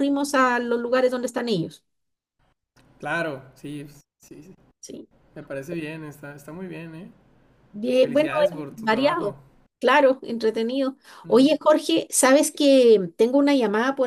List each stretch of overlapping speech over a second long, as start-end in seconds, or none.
8.0-9.3